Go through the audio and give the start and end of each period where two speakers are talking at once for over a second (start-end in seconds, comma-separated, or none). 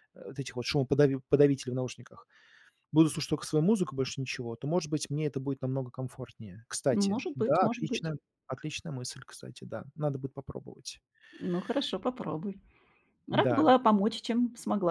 6.9-8.1